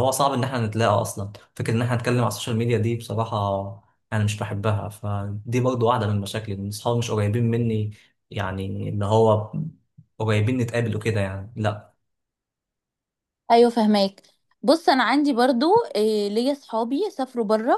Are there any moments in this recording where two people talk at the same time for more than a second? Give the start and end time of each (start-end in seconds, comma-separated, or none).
none